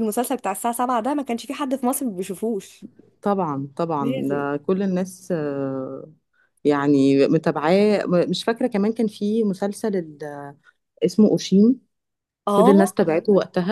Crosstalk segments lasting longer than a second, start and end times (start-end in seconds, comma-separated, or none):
none